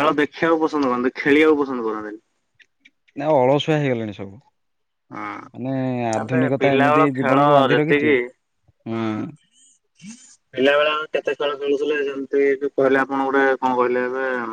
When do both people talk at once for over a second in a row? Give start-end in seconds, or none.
6.2-8.1